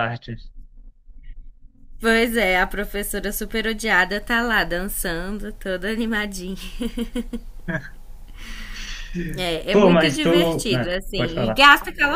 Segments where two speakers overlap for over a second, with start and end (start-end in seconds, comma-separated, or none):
9.7-11.7